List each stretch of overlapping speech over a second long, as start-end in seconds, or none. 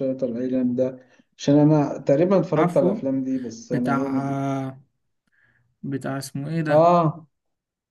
none